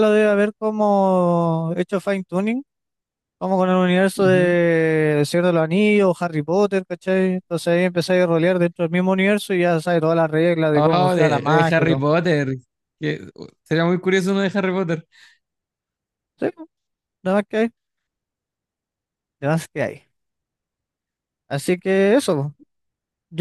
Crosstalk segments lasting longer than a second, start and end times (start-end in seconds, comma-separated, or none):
10.7-12.1